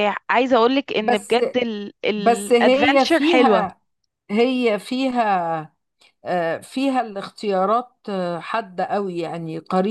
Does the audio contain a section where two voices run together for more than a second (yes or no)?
yes